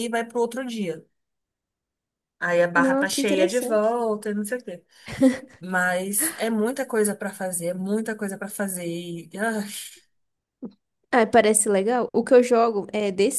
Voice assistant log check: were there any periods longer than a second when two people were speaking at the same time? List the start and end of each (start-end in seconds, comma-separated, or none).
2.8-4.0